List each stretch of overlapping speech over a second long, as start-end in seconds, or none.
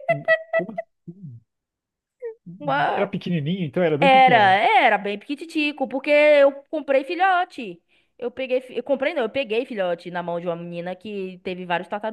none